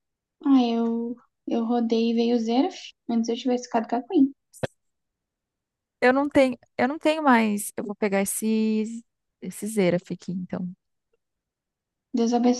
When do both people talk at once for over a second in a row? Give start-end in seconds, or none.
none